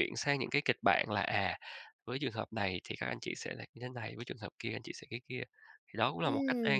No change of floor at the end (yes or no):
no